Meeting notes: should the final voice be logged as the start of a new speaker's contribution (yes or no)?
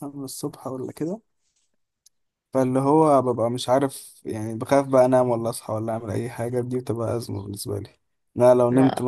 no